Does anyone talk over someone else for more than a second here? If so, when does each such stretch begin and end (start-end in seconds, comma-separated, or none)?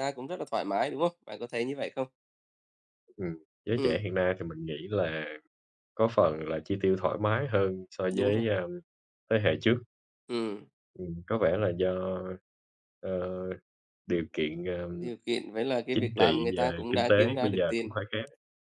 15.9-18.0